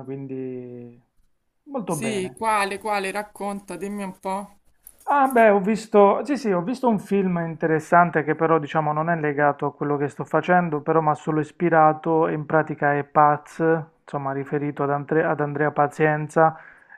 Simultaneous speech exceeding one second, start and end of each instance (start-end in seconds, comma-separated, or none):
none